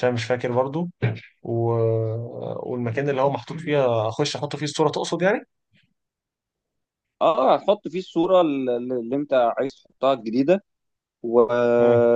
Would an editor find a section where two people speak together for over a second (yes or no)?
no